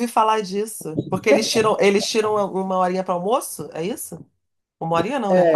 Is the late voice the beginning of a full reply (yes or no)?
yes